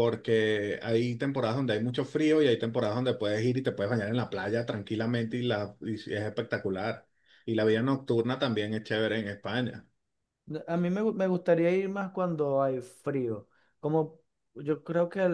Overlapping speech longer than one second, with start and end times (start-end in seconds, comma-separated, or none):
none